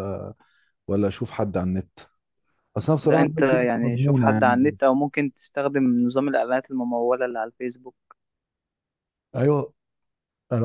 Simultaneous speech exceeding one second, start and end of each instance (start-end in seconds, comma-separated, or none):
3.0-4.8